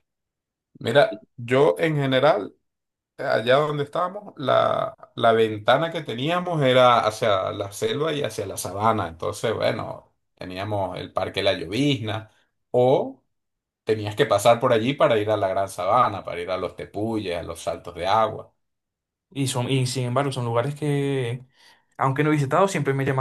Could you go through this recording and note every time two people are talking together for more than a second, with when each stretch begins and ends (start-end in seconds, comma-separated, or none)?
none